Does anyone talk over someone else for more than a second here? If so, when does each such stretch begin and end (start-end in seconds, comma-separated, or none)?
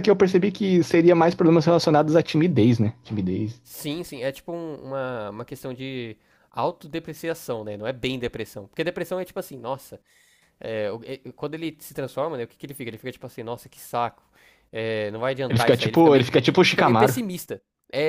15.5-17.1